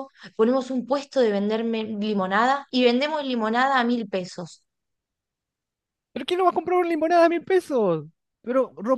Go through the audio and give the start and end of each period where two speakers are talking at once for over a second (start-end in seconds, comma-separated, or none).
none